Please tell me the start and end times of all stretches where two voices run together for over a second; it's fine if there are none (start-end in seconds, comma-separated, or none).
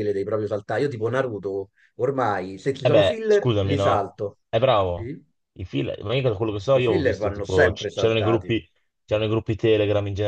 2.8-4.1, 6.7-8.6